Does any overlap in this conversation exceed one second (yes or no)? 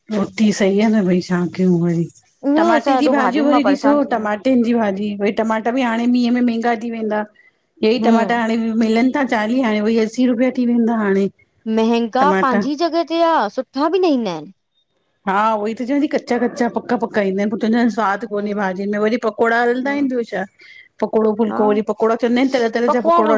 yes